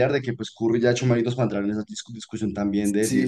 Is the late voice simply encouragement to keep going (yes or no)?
no